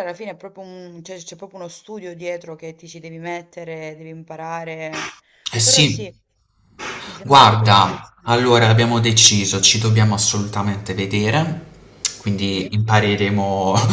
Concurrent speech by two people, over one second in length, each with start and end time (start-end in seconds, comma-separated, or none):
7.2-8.6